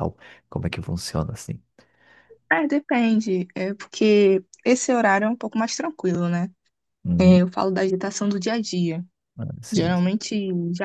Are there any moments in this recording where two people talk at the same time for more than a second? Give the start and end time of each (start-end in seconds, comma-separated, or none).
none